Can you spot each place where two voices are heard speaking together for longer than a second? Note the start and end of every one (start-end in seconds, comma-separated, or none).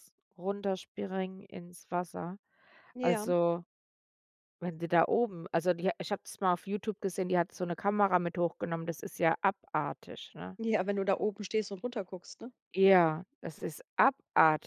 none